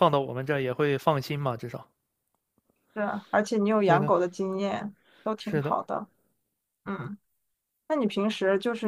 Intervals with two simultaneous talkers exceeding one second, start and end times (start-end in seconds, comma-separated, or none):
none